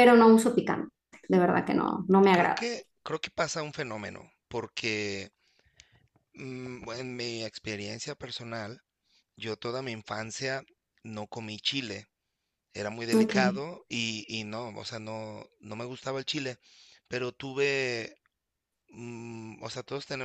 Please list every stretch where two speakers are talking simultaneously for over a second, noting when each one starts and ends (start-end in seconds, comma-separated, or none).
none